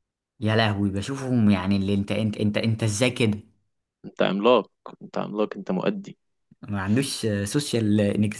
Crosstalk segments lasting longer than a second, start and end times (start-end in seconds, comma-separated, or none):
none